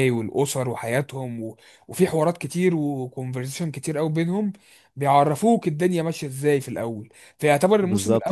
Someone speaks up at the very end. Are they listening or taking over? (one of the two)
listening